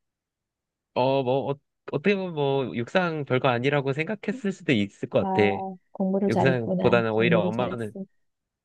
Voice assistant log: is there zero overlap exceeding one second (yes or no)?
no